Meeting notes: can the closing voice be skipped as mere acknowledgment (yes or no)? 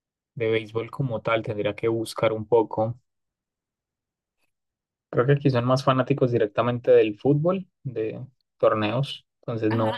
no